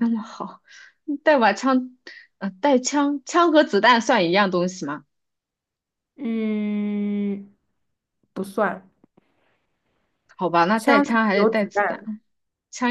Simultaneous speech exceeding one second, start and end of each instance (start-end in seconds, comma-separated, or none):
10.8-12.0